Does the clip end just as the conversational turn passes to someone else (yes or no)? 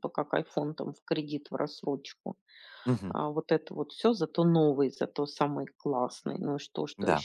no